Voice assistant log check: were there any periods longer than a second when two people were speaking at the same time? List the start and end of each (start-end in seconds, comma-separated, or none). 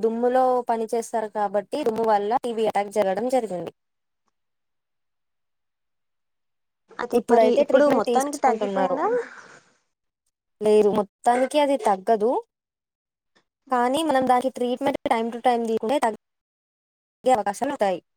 7.2-9.0